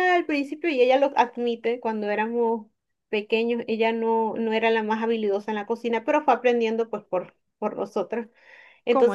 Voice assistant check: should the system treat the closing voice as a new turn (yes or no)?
no